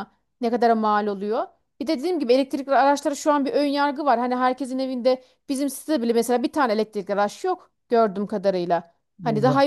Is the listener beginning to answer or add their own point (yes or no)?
no